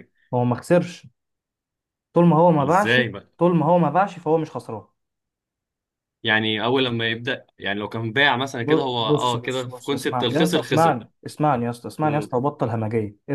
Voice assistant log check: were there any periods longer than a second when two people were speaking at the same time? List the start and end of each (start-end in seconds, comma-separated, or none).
8.6-11.0